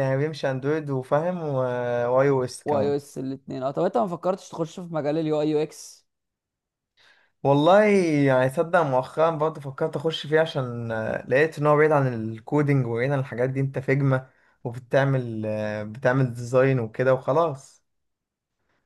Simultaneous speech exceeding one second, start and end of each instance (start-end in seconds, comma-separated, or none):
none